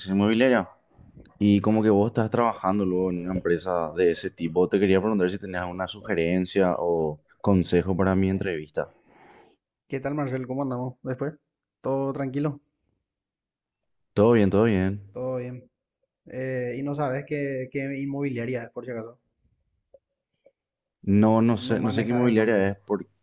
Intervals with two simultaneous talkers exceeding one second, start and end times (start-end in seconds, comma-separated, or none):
21.4-22.7